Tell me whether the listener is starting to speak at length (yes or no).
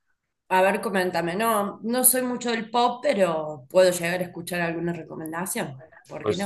yes